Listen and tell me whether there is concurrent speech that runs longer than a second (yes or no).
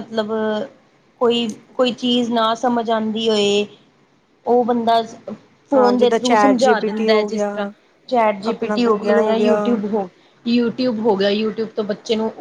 yes